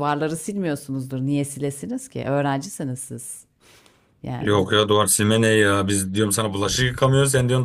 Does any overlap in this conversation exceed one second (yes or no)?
no